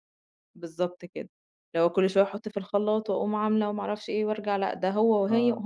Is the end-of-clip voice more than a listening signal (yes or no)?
no